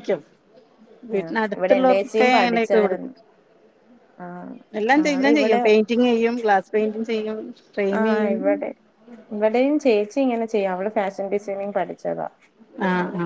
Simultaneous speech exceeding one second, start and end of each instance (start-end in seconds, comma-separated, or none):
1.2-3.1